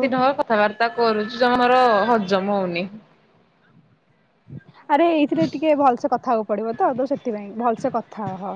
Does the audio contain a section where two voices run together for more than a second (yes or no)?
no